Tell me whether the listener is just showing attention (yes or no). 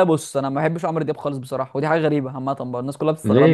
no